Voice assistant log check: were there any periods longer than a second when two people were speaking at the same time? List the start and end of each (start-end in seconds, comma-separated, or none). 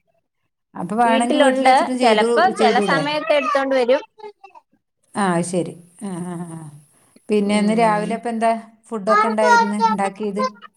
1.1-3.0